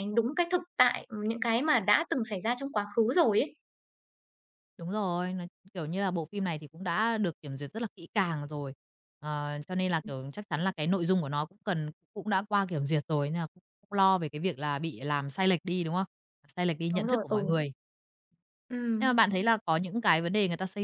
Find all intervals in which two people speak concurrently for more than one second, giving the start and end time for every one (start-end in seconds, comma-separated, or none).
none